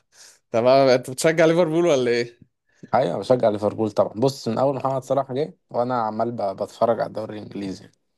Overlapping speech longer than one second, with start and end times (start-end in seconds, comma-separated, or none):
none